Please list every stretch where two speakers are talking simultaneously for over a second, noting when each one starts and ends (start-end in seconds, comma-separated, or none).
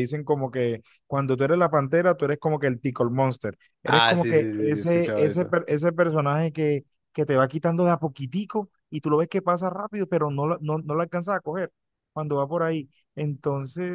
3.8-5.5